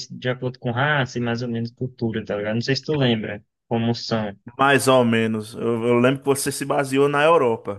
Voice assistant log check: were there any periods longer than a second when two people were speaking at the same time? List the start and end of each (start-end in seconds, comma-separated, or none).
none